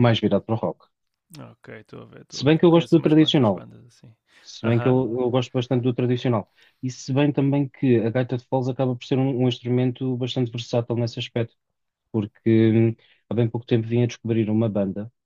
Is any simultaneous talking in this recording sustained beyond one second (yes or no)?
yes